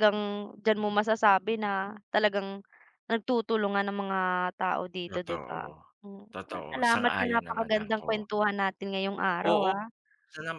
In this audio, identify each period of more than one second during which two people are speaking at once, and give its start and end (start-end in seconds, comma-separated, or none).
6.3-8.3